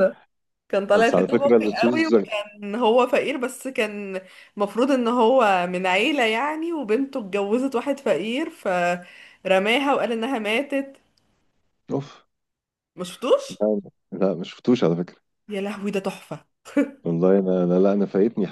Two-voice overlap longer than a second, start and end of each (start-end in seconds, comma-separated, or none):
0.9-2.1